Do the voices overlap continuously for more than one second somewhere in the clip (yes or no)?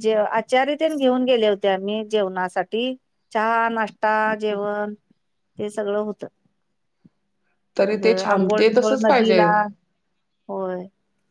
yes